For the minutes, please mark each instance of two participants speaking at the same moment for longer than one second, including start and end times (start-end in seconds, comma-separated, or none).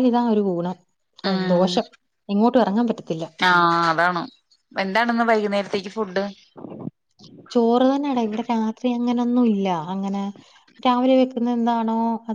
none